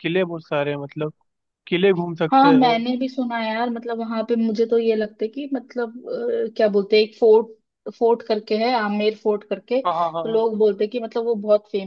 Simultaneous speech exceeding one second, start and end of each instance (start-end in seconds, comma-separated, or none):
none